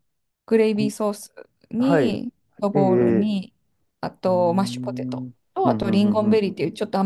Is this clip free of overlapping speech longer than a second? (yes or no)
no